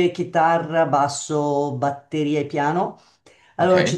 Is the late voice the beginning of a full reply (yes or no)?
no